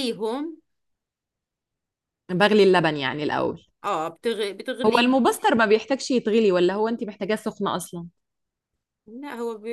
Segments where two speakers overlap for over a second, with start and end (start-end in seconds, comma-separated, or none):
none